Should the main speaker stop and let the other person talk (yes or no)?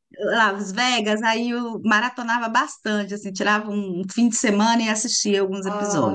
yes